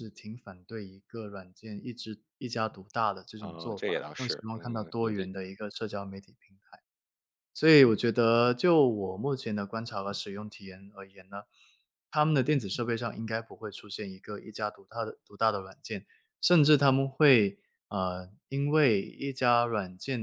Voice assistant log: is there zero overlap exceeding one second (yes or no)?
no